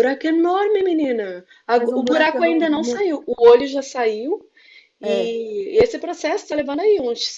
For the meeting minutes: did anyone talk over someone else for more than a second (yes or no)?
yes